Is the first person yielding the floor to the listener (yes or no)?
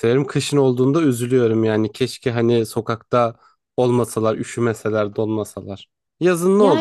yes